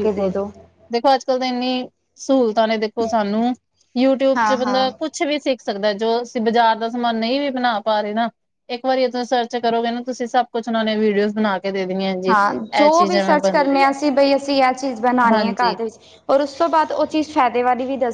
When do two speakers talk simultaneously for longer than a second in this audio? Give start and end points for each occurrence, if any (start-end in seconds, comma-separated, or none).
none